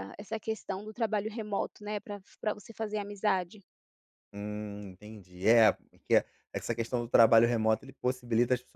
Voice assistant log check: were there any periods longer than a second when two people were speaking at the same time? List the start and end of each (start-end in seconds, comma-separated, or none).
none